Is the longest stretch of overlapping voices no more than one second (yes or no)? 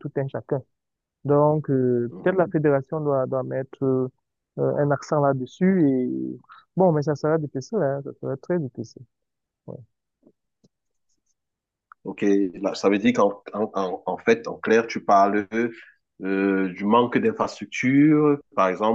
yes